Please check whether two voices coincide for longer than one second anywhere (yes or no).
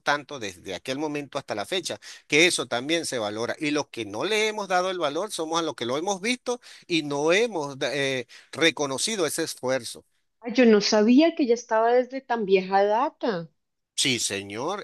no